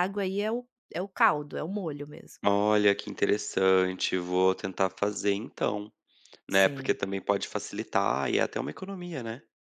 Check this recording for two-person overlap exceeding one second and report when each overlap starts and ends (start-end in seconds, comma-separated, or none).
none